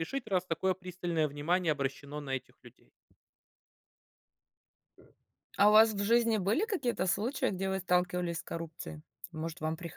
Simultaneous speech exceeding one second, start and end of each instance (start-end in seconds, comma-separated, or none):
none